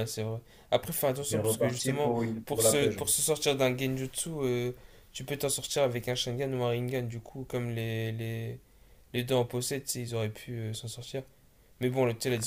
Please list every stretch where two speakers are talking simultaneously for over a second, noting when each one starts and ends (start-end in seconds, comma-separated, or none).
1.2-3.0